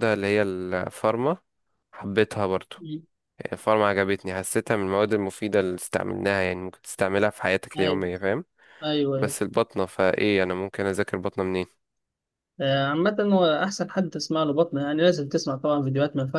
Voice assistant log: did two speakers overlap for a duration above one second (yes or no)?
no